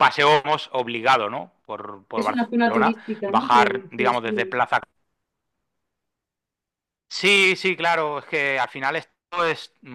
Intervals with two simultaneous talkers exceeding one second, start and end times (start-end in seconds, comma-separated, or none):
2.1-4.6